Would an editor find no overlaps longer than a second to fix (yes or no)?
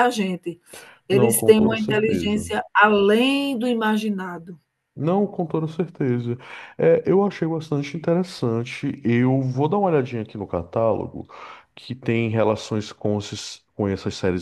no